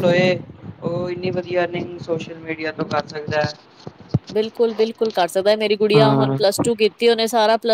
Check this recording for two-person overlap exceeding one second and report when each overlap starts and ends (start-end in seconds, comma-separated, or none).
none